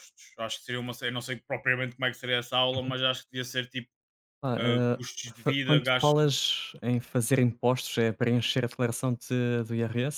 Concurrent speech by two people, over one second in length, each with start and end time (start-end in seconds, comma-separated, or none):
4.6-6.3